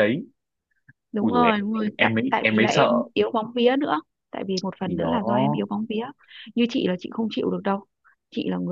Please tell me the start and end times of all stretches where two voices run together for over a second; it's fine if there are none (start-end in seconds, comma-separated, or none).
1.2-2.9